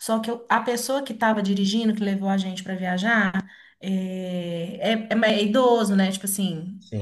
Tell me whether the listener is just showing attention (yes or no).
yes